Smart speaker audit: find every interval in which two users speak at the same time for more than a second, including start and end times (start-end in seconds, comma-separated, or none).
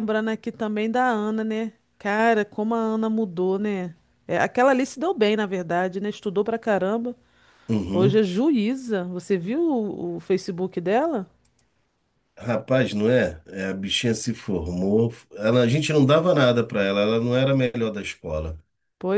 none